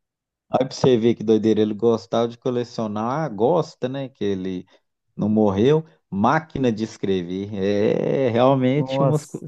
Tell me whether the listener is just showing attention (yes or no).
no